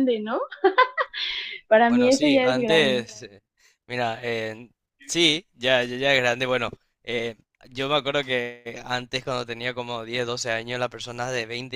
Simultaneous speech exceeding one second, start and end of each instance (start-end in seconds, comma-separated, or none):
1.9-3.0